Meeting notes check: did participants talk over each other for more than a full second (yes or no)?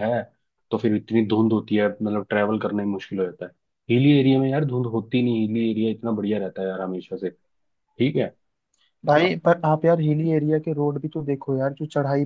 no